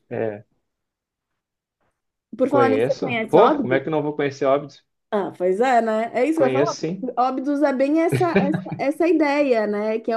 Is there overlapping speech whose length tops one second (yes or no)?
yes